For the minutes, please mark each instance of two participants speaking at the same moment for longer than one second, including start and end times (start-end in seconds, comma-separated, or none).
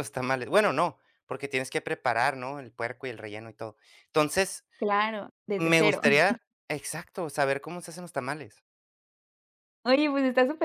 none